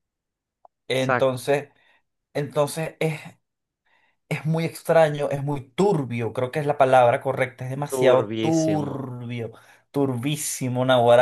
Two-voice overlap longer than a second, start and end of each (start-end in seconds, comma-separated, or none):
7.9-9.1